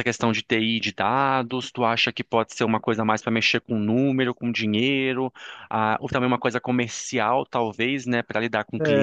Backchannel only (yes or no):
no